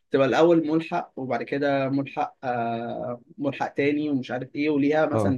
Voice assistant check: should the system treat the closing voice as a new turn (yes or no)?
no